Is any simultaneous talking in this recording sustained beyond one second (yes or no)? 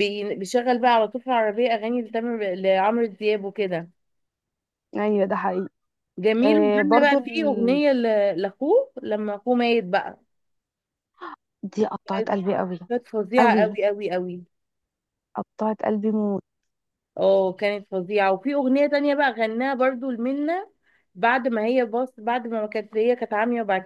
yes